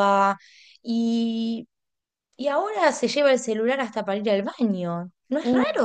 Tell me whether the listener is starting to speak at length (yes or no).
yes